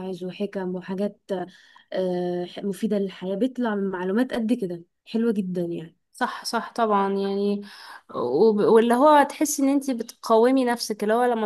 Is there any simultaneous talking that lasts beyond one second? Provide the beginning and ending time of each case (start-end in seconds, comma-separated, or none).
none